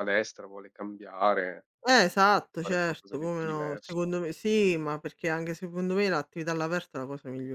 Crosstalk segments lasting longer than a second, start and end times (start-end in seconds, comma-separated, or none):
2.6-4.0